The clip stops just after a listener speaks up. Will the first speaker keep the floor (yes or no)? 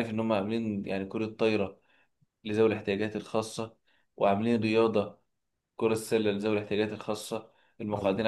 yes